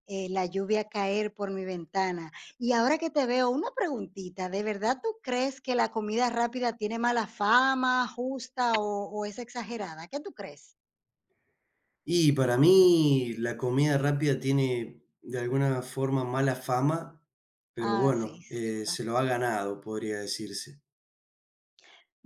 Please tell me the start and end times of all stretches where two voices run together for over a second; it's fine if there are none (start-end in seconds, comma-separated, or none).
17.8-19.0